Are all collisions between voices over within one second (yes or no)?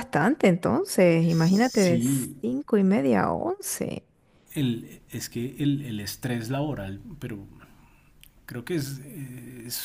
yes